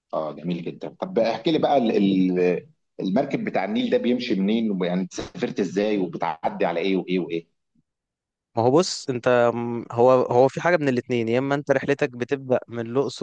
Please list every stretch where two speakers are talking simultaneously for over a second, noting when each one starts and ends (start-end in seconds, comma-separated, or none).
none